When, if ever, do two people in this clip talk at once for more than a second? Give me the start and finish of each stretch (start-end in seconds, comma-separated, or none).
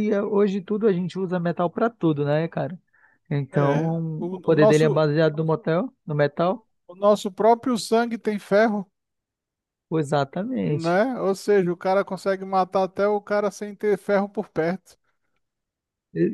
3.5-5.1